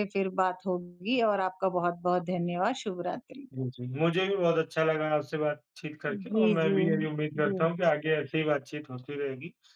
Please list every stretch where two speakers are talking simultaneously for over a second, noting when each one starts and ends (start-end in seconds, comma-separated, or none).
6.0-7.7